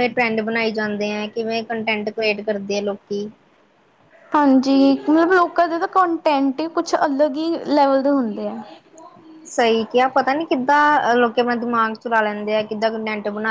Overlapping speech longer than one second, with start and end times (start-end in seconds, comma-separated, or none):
none